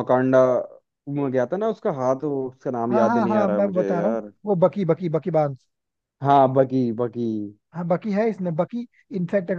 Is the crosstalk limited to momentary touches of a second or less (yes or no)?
no